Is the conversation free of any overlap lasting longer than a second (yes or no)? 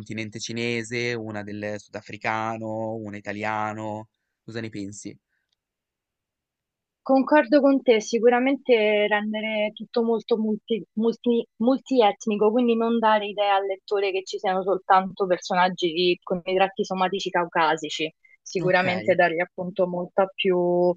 yes